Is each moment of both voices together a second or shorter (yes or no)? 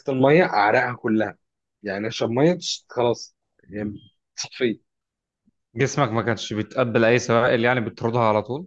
yes